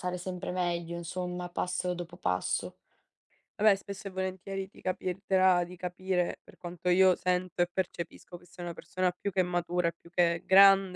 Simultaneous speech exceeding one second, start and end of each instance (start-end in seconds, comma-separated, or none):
none